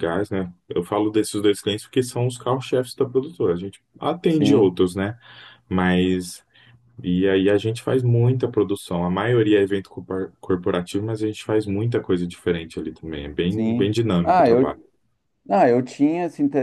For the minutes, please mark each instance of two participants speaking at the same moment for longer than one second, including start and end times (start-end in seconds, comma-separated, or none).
13.5-14.8